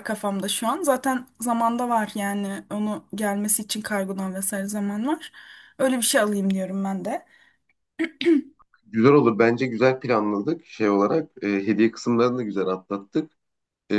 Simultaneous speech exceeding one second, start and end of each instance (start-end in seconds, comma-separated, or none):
none